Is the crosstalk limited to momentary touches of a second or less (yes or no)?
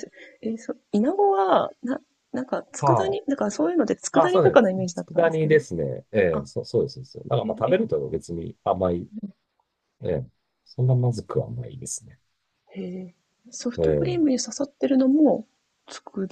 no